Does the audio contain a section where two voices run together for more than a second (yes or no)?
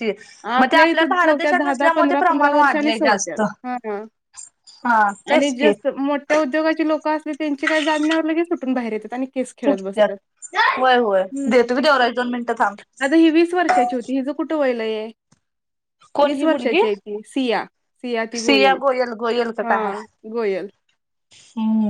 yes